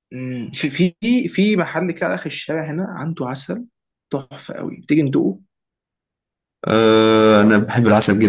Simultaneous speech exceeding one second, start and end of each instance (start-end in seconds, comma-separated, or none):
none